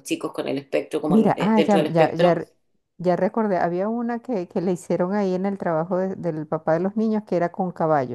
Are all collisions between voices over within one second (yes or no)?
no